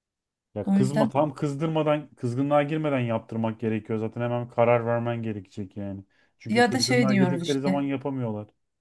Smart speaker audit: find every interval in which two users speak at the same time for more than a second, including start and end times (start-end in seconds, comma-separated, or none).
6.5-7.8